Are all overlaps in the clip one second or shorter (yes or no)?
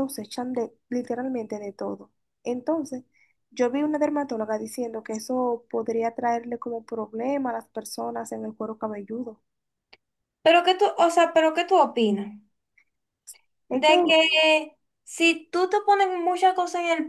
yes